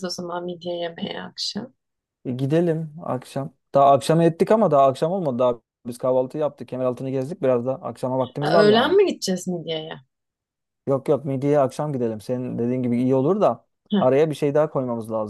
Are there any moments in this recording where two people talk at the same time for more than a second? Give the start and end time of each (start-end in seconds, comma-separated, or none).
none